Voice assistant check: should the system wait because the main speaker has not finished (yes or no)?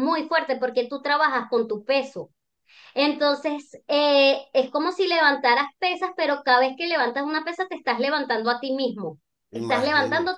yes